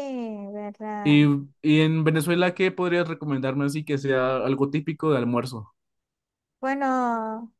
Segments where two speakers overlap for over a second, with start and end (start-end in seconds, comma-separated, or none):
none